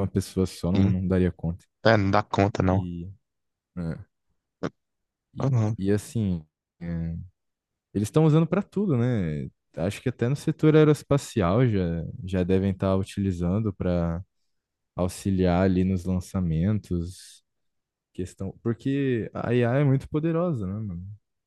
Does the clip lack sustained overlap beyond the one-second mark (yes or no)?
yes